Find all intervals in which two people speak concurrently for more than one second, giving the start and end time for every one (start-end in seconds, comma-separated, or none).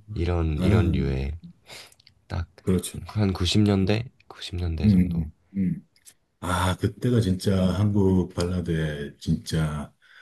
none